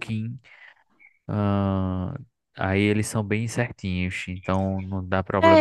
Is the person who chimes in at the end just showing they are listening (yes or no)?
no